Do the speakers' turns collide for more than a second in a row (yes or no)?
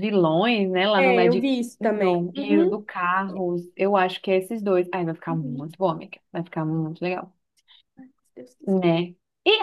yes